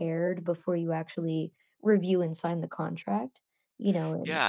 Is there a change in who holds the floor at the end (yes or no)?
yes